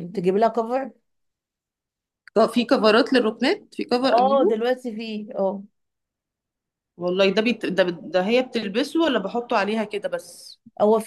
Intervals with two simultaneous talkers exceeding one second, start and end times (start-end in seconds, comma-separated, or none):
none